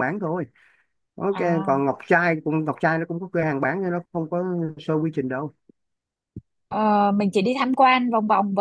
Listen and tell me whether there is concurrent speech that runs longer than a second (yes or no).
no